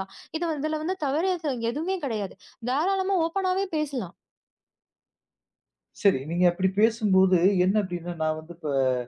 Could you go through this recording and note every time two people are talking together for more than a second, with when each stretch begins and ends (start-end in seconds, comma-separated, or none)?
none